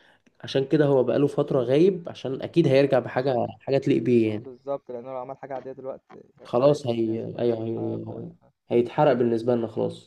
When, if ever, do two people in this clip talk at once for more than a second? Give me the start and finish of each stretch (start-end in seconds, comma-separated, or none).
6.4-8.1